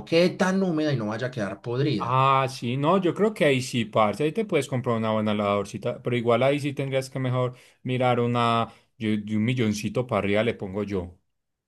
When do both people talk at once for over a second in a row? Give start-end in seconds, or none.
none